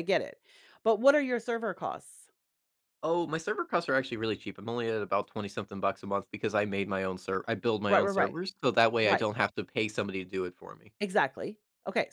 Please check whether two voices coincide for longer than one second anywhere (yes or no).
no